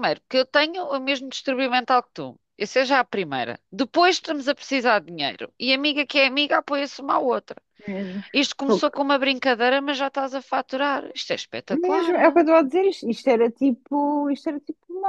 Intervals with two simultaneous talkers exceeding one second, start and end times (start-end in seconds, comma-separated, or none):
none